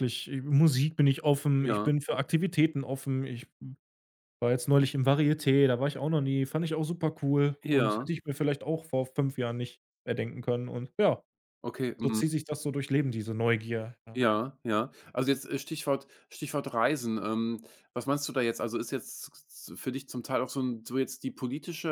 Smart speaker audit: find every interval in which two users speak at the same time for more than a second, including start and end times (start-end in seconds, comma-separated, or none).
none